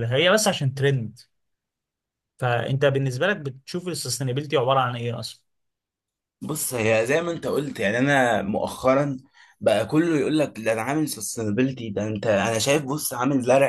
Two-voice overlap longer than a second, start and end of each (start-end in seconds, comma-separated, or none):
none